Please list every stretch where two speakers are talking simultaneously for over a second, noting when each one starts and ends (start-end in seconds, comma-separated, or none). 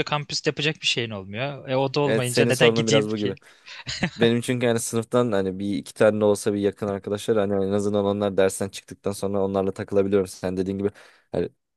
2.0-3.4